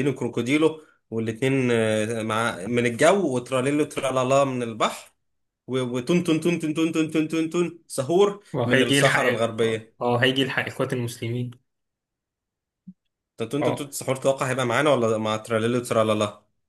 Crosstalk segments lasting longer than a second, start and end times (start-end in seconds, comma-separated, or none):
8.5-10.0